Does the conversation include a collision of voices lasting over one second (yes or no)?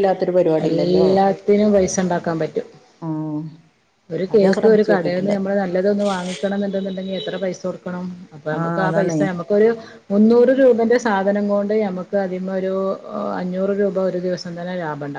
no